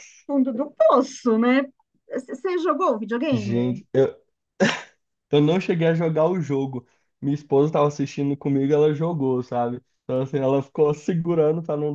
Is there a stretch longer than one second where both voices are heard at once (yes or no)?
no